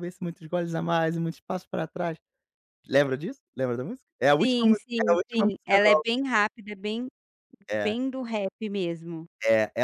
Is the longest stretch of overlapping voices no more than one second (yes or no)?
no